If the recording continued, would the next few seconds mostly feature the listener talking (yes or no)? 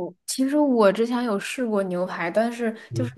no